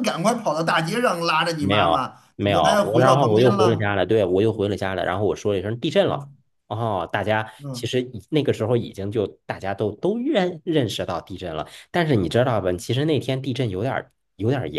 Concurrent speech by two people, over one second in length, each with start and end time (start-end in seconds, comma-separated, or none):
1.6-3.9